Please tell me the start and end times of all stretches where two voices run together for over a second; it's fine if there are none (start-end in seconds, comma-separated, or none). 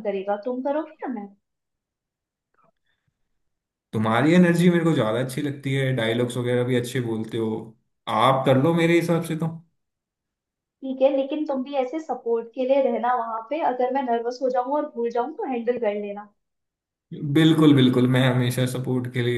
none